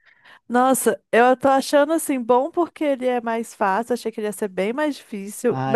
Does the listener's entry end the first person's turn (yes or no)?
yes